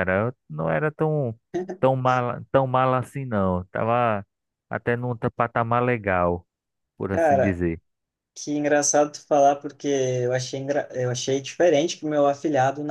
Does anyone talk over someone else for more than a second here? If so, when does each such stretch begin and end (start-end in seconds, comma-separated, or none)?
none